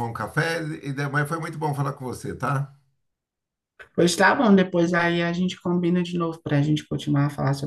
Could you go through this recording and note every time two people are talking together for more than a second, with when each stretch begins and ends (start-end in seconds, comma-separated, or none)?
none